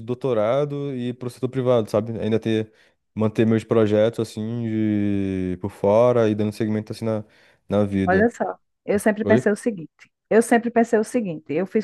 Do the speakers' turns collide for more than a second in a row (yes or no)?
no